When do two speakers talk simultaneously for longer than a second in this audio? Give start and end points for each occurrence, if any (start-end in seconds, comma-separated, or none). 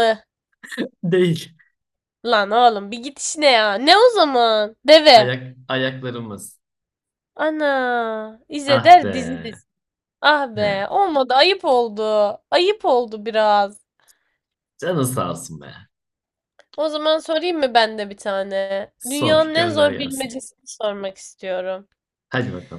19.0-20.3